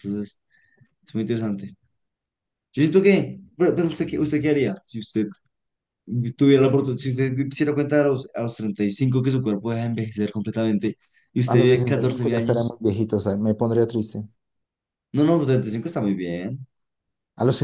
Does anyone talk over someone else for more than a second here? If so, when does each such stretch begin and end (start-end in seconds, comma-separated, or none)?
11.4-12.8